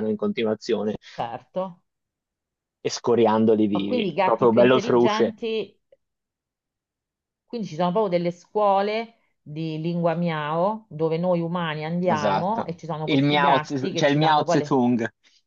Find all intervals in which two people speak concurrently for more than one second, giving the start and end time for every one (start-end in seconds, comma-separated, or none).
3.7-5.3, 12.0-14.8